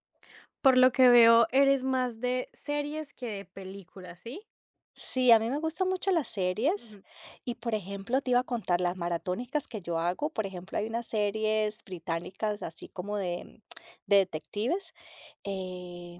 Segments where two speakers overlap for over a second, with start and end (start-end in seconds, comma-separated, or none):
none